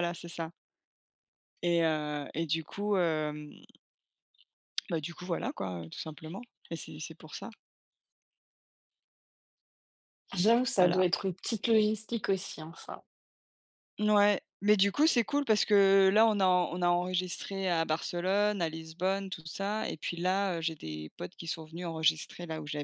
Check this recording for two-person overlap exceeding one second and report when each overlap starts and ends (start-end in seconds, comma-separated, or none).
none